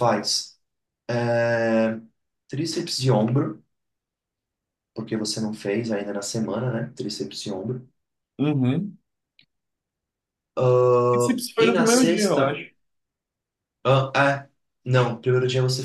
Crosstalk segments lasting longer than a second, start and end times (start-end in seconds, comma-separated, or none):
11.1-12.6